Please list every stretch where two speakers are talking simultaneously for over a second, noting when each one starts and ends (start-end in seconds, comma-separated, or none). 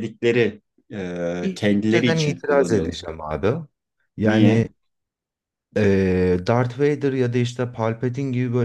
1.4-3.0